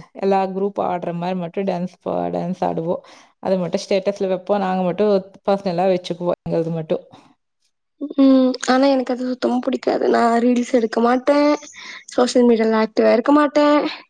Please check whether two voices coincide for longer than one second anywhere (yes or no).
no